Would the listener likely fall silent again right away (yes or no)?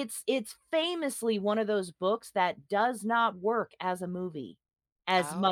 yes